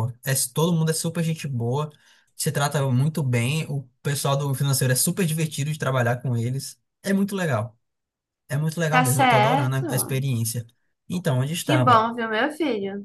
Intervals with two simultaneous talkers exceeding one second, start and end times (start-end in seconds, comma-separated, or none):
8.9-10.2